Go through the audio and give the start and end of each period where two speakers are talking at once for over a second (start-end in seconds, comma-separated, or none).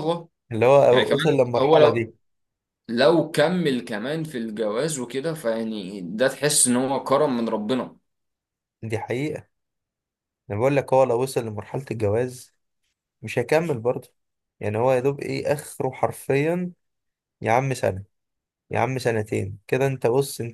0.9-2.1